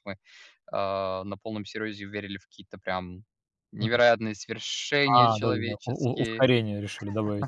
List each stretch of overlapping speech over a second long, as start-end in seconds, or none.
5.1-6.5